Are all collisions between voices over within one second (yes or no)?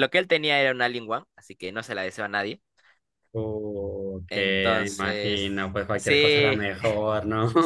no